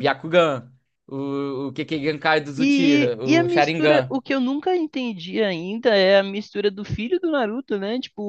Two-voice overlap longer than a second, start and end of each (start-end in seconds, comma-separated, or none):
2.6-4.2